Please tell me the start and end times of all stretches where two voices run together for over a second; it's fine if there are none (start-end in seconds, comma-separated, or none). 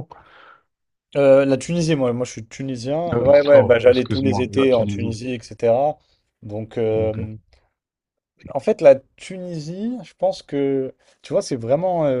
3.1-5.2